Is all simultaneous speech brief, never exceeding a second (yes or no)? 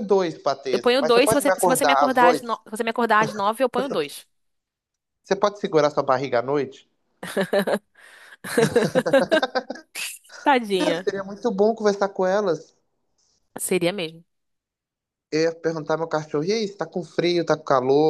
no